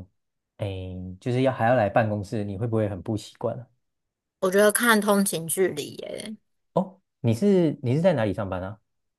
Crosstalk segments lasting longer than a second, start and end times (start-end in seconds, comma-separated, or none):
none